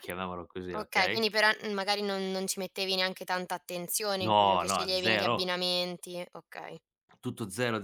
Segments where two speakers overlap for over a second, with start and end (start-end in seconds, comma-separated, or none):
4.2-5.5